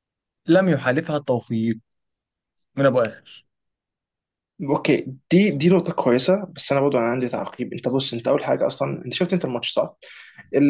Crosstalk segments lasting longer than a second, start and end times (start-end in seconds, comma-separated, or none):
none